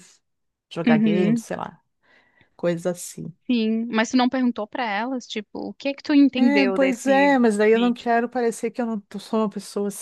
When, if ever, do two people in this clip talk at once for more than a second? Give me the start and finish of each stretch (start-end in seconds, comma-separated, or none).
6.4-8.1